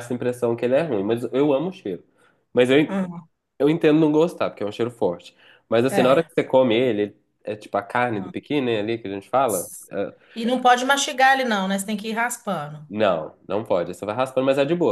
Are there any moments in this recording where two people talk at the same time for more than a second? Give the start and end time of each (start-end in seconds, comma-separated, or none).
none